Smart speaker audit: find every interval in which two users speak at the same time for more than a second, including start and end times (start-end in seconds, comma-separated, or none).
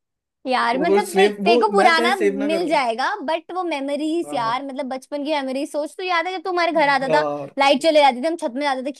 0.7-2.8